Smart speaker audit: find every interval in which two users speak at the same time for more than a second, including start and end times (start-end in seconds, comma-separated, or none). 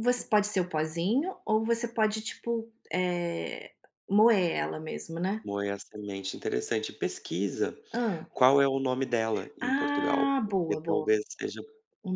9.6-11.1